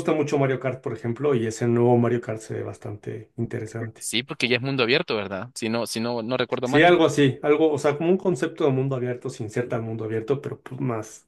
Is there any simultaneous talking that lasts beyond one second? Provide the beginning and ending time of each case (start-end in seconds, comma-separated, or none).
none